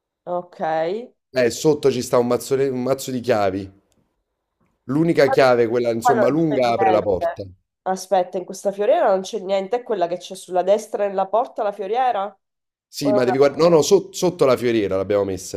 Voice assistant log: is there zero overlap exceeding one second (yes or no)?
no